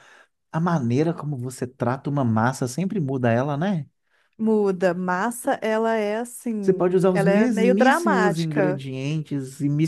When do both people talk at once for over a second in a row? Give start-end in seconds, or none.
6.6-8.8